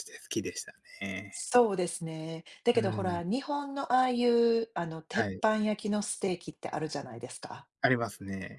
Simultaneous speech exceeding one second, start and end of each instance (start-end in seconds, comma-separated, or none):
none